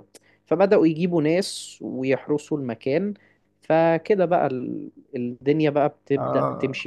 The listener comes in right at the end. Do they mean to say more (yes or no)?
no